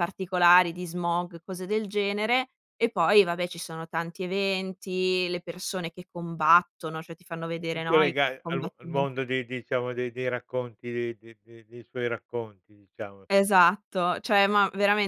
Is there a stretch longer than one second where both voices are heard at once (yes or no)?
yes